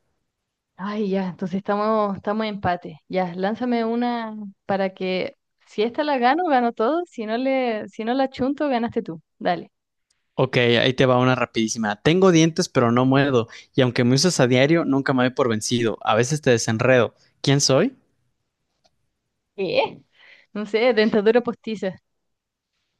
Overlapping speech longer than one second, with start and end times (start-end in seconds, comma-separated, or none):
none